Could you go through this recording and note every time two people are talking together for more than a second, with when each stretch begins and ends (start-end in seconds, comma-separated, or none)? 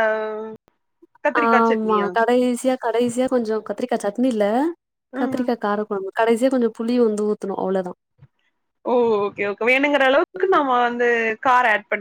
none